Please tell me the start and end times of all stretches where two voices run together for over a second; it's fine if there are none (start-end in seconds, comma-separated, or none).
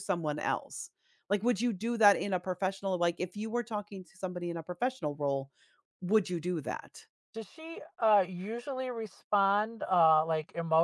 none